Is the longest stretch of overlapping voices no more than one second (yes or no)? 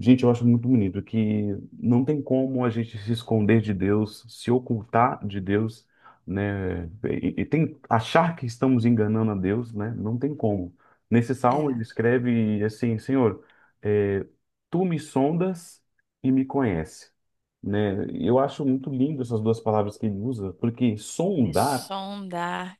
yes